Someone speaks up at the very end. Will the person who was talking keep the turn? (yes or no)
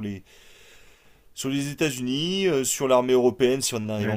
no